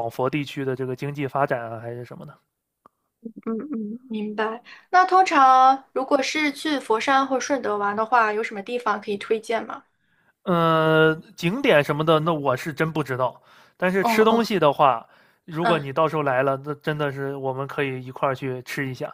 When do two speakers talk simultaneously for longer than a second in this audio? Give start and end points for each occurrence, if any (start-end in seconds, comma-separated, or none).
none